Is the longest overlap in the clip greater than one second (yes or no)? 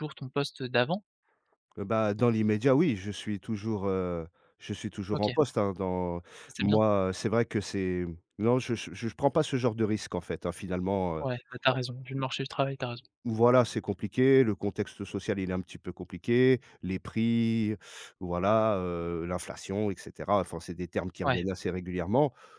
no